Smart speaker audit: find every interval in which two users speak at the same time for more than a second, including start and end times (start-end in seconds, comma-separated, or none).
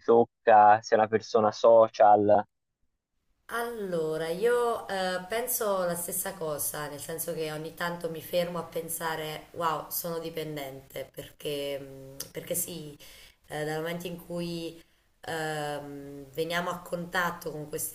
none